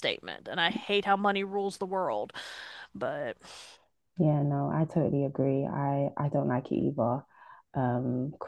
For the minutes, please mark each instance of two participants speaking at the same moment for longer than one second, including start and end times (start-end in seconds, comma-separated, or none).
none